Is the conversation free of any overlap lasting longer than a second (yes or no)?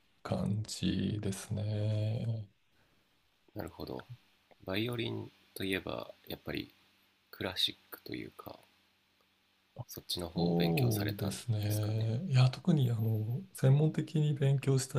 no